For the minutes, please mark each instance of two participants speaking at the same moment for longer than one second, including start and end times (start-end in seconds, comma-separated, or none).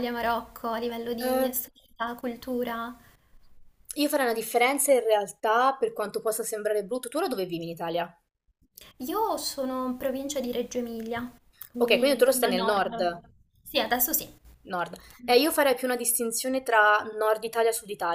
11.8-13.1